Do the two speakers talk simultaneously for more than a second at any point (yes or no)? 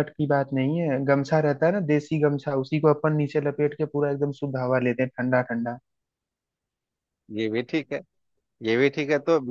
no